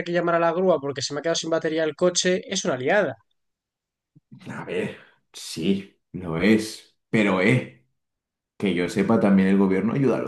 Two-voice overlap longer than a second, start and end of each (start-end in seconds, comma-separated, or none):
none